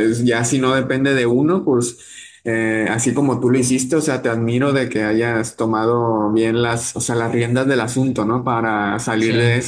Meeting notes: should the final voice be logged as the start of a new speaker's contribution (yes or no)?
no